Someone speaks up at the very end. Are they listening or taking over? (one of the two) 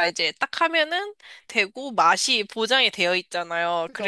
listening